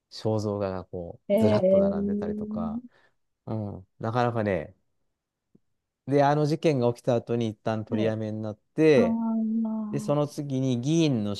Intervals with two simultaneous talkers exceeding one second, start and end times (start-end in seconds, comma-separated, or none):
1.3-2.6